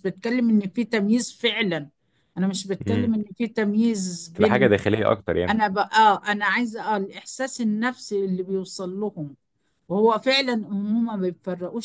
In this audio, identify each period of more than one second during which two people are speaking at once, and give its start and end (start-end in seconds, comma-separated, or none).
none